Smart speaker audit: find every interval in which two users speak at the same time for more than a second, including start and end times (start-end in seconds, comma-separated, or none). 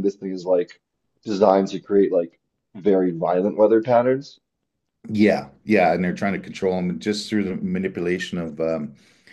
none